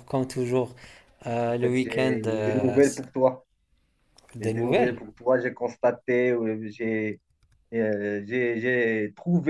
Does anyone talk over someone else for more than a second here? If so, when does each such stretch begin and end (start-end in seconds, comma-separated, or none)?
1.5-3.0